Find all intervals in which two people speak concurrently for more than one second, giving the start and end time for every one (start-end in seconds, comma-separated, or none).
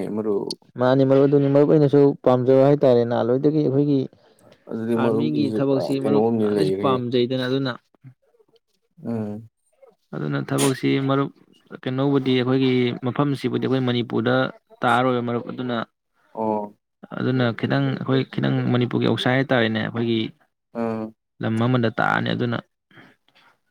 5.0-6.9